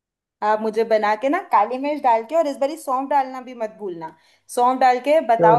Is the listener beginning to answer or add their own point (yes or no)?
yes